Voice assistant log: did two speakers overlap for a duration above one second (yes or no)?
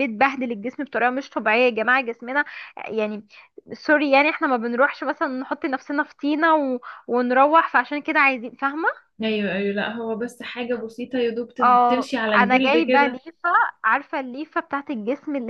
yes